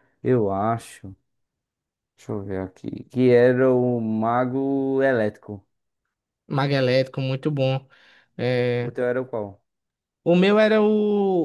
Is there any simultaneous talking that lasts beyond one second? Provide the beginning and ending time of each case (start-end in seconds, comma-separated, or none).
none